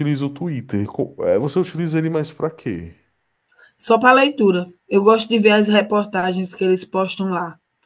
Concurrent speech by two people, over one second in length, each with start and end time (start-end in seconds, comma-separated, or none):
none